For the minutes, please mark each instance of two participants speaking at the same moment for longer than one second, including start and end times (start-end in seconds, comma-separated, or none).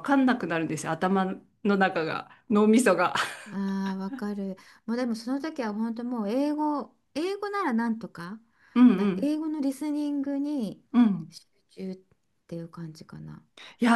none